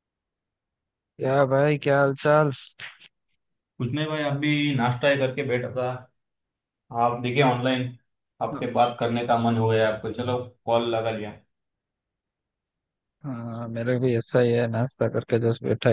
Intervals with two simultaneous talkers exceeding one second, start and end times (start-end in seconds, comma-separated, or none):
none